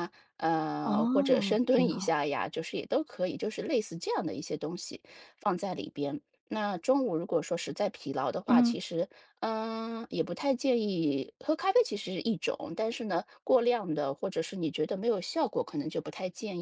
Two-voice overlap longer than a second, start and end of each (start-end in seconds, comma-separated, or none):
0.8-2.2